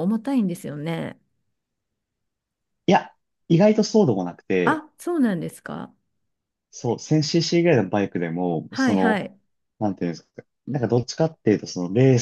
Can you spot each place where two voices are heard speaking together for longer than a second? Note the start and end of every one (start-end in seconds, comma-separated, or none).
none